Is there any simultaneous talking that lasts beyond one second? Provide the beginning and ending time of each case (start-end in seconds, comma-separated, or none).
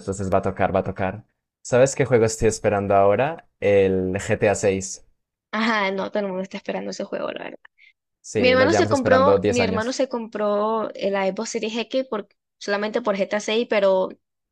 8.4-9.9